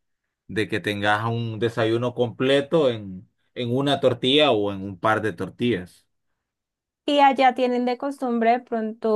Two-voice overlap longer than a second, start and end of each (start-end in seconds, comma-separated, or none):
none